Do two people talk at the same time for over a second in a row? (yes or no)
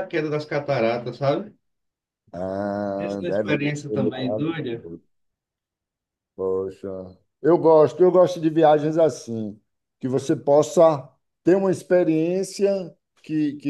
yes